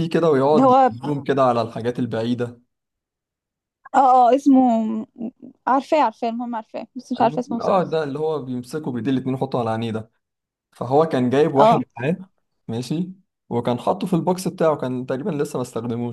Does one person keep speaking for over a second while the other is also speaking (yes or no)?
no